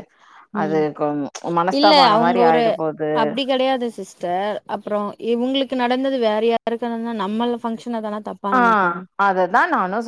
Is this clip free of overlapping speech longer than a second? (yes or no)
yes